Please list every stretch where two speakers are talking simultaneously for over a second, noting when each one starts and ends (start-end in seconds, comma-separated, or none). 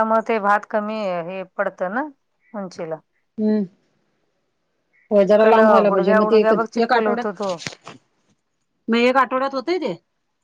5.2-7.5